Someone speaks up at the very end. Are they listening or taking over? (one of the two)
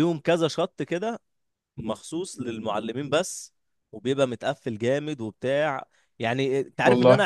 listening